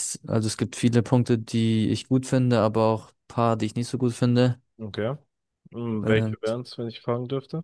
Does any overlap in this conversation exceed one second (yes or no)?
no